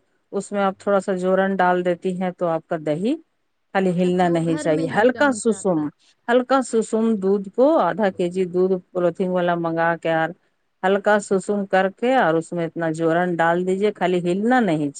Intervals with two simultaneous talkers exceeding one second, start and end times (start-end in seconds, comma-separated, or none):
4.1-5.8